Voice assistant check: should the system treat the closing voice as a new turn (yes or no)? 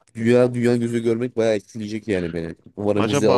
yes